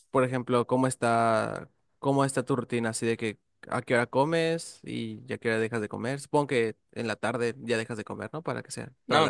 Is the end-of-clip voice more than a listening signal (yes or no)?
yes